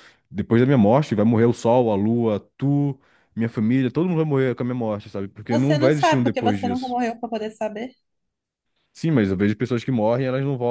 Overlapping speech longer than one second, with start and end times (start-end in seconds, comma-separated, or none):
5.5-7.0